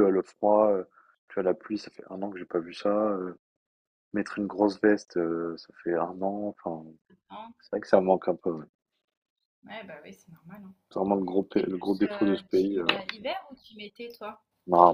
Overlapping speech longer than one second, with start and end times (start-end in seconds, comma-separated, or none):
11.5-12.9